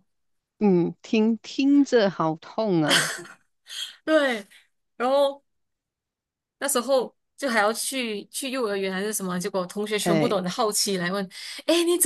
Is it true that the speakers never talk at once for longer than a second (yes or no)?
yes